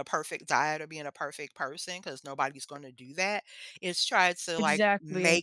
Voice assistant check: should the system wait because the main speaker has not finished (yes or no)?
yes